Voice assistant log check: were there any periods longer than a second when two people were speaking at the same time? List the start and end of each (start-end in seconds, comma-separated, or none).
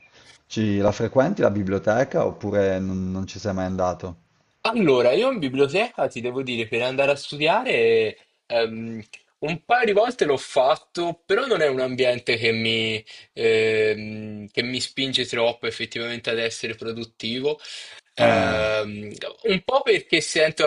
none